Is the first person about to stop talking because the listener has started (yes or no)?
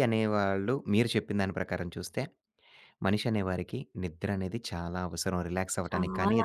no